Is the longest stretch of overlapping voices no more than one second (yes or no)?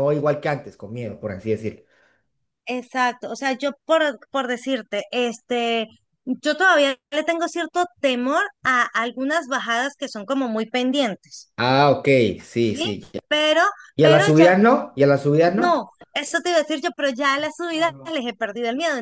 yes